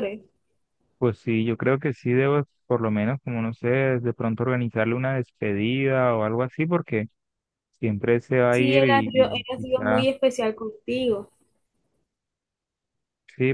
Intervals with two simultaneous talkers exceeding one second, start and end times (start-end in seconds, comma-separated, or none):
8.5-10.1